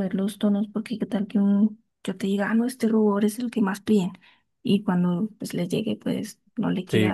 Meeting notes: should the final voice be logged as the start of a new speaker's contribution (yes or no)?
yes